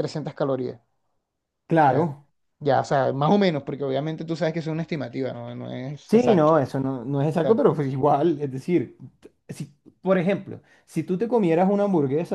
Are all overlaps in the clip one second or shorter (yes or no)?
yes